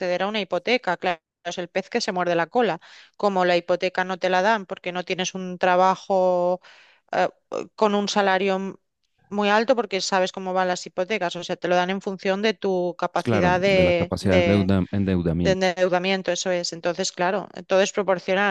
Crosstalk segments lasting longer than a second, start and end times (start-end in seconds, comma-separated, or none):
13.2-14.7